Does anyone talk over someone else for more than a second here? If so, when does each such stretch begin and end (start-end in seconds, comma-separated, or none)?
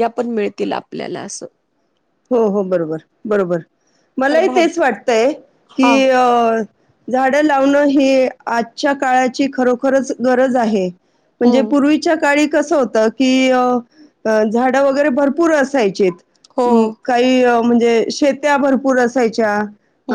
none